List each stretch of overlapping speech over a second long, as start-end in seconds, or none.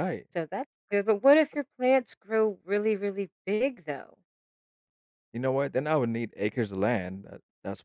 none